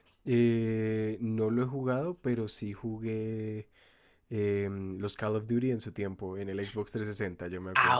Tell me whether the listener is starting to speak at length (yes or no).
yes